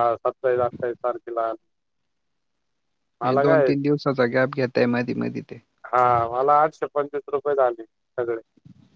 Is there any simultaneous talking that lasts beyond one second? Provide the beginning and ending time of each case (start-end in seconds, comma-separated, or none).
none